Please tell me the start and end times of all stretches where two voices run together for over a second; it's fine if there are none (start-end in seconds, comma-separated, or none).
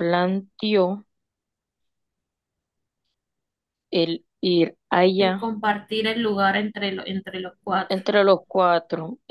none